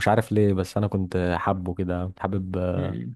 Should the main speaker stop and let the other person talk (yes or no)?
yes